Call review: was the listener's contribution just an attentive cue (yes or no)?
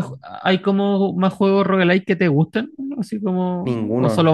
no